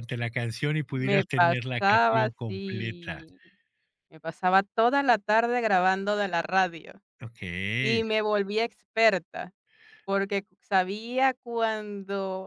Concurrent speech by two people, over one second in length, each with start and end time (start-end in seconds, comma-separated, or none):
0.9-3.2